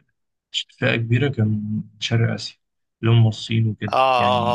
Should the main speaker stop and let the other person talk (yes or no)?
yes